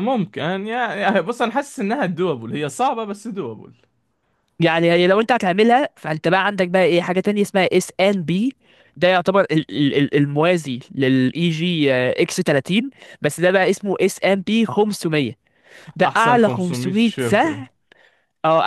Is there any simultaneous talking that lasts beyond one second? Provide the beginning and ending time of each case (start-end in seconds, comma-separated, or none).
16.0-17.6